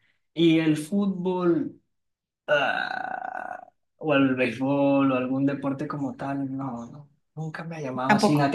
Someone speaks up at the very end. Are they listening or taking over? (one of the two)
listening